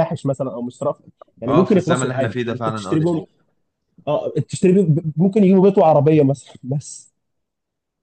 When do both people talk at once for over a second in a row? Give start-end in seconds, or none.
1.5-3.2